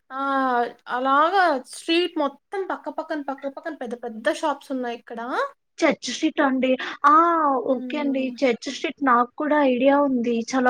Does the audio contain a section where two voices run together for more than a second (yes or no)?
no